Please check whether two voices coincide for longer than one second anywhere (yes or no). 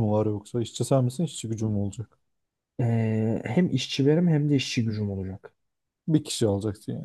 no